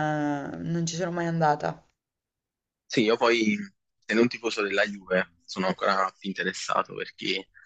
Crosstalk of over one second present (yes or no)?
no